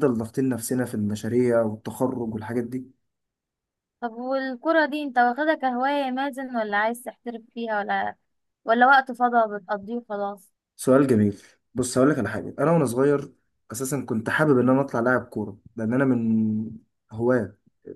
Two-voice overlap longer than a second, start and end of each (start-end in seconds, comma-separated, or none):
none